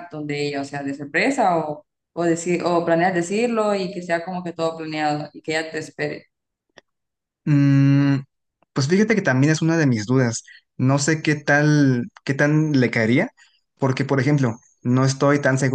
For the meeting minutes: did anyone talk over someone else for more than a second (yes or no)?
no